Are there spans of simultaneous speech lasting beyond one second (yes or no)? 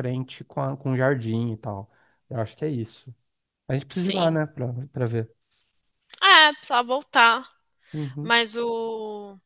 no